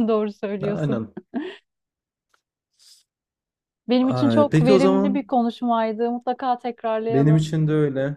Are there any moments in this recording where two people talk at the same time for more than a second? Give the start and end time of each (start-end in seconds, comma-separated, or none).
4.0-5.3